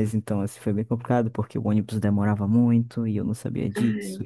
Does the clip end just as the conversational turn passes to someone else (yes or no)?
no